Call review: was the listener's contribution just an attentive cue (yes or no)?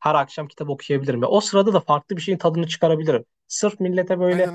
yes